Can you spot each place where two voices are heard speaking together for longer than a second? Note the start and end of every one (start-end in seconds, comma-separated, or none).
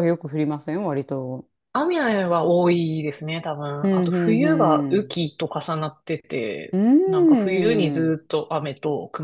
3.8-5.2, 6.7-8.1